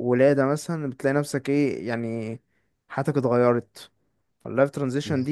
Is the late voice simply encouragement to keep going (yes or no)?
yes